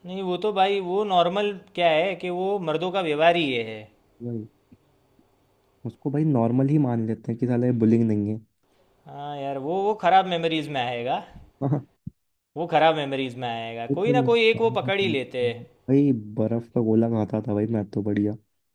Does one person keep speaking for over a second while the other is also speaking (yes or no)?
yes